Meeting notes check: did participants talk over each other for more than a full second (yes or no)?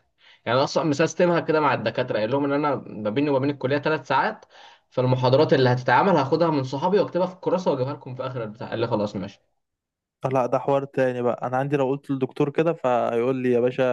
no